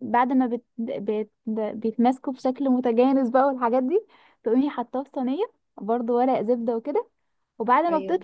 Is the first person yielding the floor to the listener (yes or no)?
no